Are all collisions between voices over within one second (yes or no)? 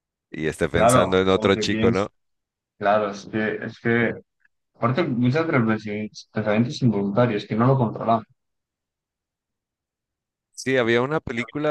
no